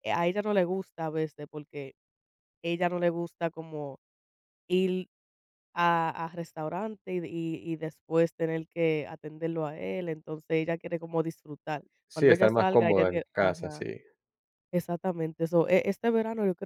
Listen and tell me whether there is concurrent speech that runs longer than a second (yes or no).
yes